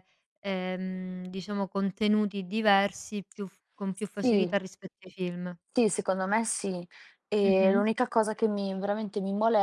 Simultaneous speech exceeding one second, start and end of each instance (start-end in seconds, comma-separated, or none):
none